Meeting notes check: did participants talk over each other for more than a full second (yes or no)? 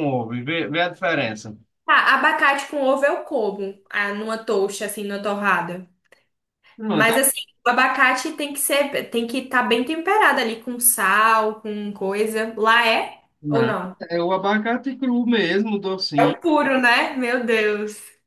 no